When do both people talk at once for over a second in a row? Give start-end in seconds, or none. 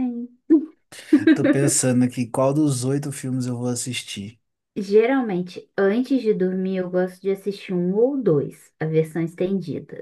none